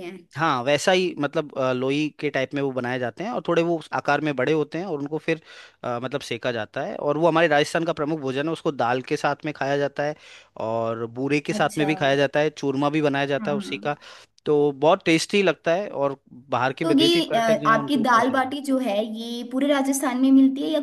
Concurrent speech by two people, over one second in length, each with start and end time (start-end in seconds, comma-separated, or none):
16.8-18.6